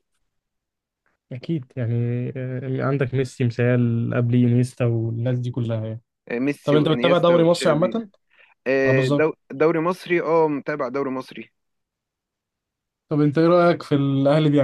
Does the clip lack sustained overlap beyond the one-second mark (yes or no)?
no